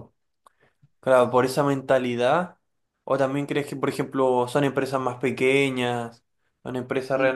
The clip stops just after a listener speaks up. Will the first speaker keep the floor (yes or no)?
yes